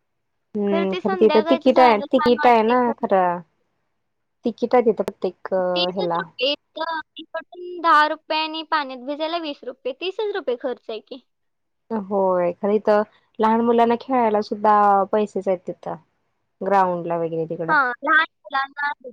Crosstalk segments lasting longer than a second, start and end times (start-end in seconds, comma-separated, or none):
0.9-2.8